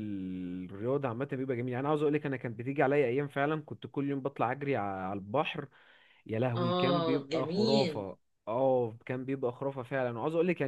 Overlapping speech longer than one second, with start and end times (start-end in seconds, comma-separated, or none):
6.5-8.1